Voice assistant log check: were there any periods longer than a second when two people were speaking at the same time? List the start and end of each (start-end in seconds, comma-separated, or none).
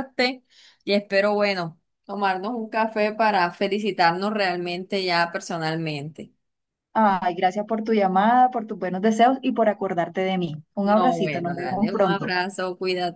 10.8-12.3